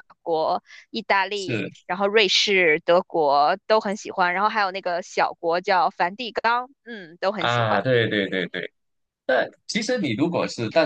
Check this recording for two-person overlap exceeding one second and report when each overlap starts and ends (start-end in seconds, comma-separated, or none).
none